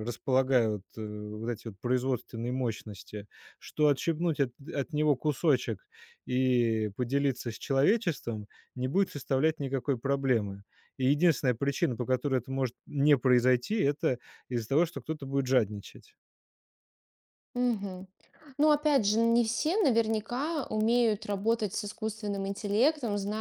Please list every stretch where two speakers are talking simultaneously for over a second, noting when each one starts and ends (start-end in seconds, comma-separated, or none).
none